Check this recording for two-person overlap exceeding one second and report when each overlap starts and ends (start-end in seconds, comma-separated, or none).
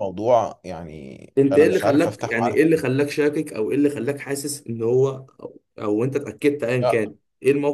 1.4-2.8